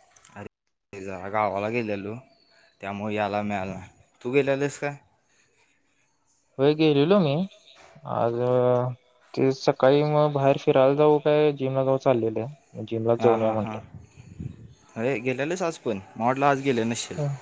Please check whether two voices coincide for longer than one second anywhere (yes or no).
no